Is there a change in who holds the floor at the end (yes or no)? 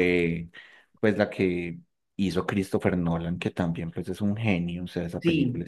yes